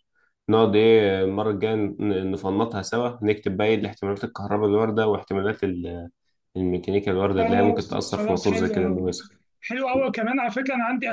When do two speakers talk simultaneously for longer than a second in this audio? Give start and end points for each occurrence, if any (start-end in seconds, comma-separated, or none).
7.4-9.0